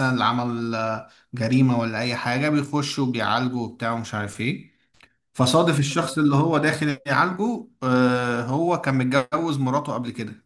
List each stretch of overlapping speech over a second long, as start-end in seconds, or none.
5.5-7.0